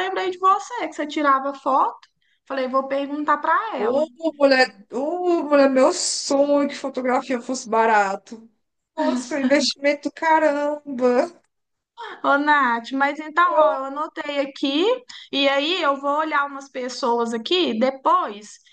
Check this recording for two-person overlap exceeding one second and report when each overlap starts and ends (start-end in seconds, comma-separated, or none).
none